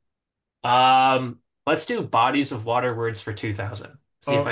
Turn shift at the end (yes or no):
yes